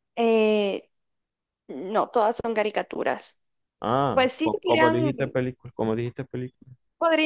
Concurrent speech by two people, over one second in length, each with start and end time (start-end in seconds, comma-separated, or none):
4.1-5.3